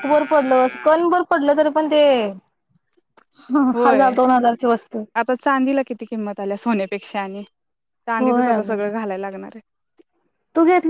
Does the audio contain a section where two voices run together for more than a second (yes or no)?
no